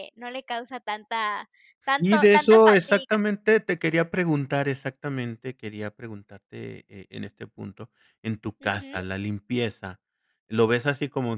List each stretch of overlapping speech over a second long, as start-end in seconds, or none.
1.8-3.2